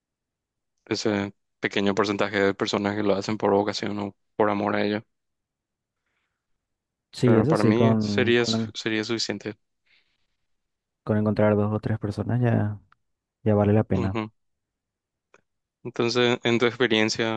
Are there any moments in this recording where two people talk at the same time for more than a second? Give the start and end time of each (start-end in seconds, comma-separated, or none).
7.2-8.7